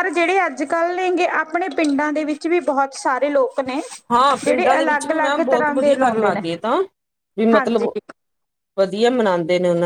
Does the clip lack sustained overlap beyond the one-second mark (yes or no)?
no